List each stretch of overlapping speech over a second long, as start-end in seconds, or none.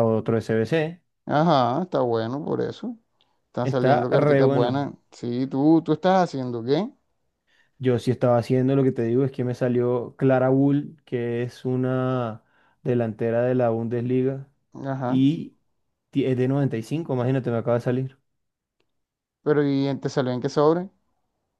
3.6-4.9